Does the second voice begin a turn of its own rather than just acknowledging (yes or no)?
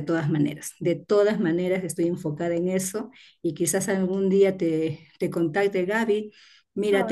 no